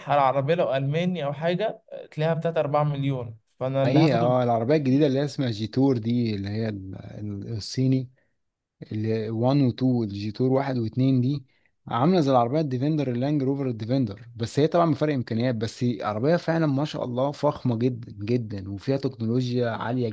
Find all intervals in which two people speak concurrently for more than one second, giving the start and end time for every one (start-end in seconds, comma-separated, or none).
none